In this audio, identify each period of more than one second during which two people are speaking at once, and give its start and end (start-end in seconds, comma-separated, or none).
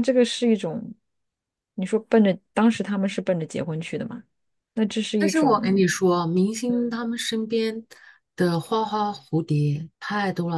none